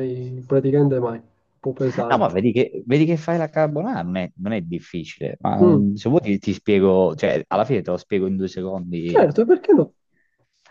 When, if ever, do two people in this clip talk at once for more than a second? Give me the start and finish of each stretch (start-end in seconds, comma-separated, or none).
none